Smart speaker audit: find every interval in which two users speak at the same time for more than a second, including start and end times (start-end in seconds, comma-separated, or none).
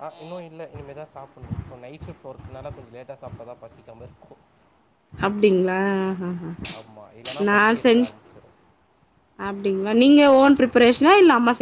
none